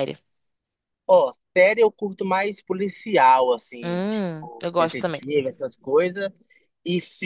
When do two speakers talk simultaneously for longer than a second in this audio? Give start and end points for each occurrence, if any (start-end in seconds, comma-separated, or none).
3.8-5.2